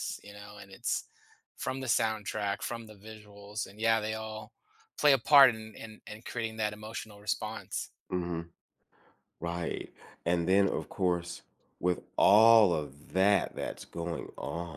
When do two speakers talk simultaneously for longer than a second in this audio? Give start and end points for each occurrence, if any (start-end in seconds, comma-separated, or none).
none